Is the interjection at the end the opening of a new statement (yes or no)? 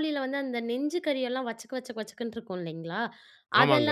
no